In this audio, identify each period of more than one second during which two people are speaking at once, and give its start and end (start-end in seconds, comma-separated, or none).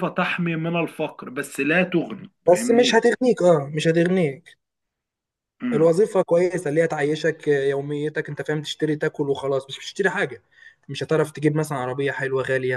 none